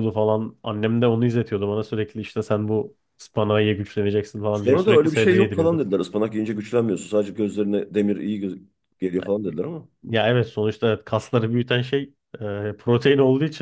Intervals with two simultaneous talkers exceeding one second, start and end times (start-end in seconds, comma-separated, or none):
4.5-5.8